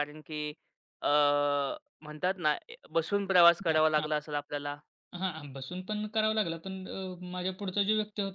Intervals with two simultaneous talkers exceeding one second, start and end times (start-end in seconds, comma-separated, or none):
none